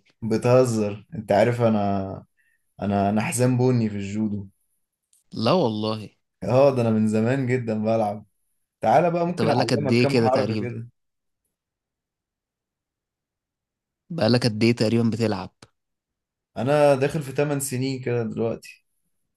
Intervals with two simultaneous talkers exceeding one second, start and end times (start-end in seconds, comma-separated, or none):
9.3-10.7